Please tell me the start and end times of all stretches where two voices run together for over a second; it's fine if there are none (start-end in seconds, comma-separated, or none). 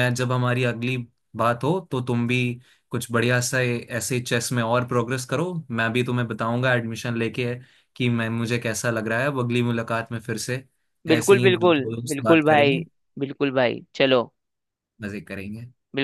11.1-12.8